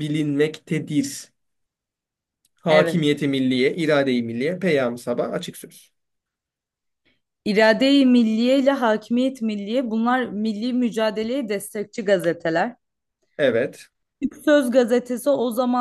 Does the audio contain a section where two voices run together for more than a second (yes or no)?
no